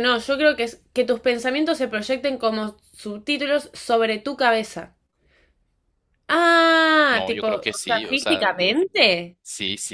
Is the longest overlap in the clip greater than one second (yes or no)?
yes